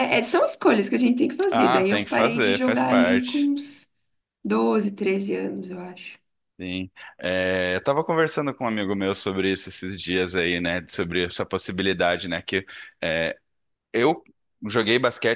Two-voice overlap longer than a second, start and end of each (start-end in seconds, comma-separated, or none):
1.5-3.5